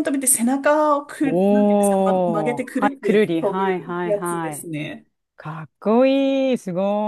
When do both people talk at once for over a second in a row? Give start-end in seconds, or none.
1.2-4.7